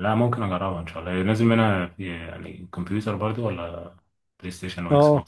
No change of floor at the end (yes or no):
no